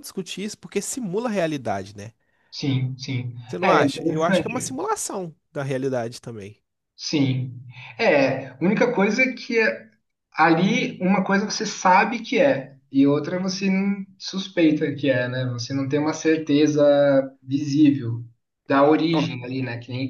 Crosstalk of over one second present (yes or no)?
yes